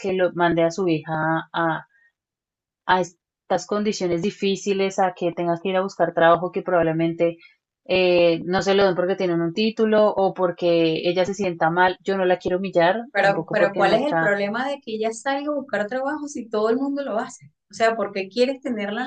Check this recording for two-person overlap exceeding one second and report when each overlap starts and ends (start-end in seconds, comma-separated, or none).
13.1-14.3